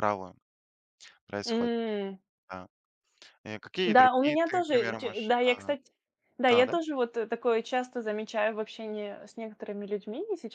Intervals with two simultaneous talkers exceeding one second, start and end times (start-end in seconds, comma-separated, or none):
3.9-5.7